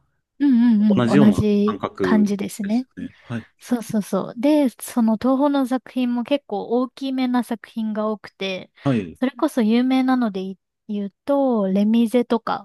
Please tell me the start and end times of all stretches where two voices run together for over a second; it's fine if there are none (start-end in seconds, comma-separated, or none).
0.9-2.9